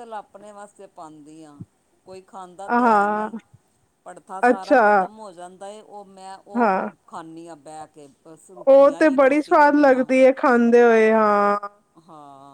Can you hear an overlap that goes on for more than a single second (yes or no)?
yes